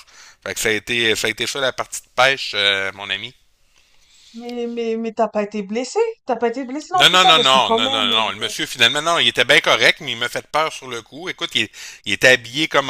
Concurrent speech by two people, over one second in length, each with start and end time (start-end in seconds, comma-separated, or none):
6.9-8.5